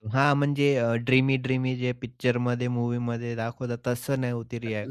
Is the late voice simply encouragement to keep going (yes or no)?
no